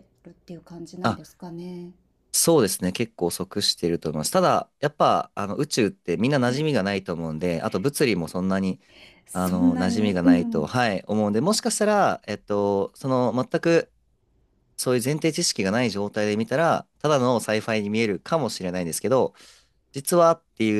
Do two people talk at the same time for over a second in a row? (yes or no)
yes